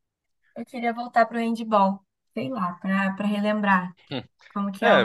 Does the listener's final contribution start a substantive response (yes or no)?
yes